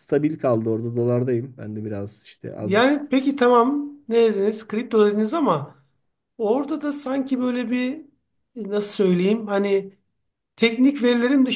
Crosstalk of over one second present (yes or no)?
no